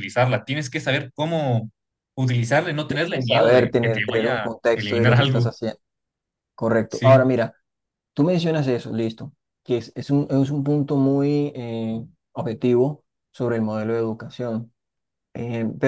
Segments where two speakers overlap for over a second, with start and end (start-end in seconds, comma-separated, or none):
3.1-5.5